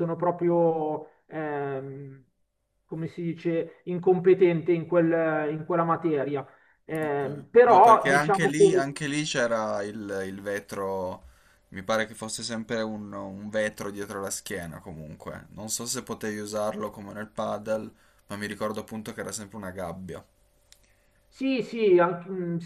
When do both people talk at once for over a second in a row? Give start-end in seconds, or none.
7.0-8.9